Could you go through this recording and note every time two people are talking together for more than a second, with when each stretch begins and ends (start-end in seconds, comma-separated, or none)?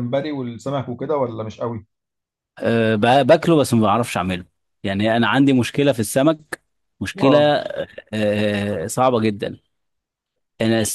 none